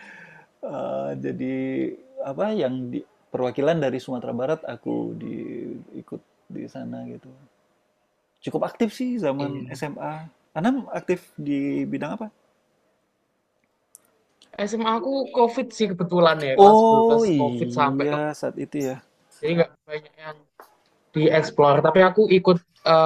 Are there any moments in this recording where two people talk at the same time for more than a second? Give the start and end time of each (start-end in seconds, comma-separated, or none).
16.6-18.3